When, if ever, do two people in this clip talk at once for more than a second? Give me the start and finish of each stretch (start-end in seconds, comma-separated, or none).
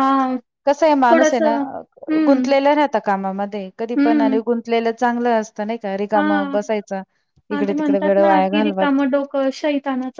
7.5-9.0